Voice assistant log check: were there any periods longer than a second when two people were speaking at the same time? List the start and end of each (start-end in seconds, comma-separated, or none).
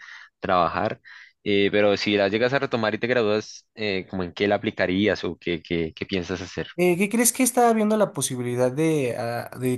none